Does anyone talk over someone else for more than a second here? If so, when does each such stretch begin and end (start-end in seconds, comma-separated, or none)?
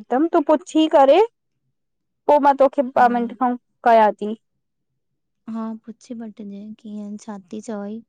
none